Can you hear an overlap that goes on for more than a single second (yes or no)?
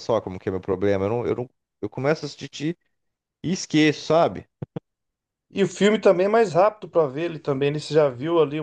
no